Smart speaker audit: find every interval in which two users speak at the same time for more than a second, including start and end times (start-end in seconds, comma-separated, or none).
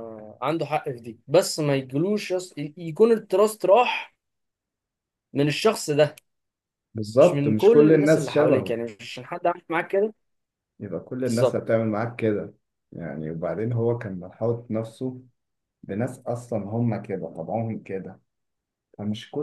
7.2-8.8